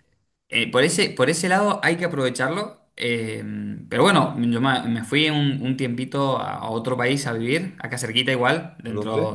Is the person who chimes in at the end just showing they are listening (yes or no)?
yes